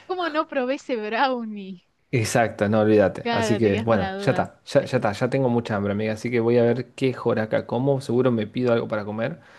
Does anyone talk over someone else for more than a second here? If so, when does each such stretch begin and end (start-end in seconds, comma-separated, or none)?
3.2-4.5